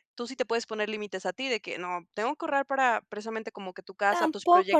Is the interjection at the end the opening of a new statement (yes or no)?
yes